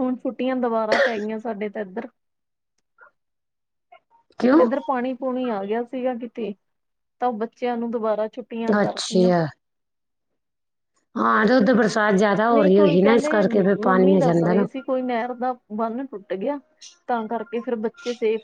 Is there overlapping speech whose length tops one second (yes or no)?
yes